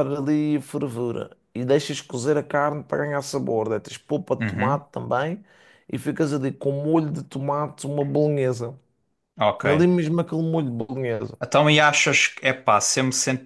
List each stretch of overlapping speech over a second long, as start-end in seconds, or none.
none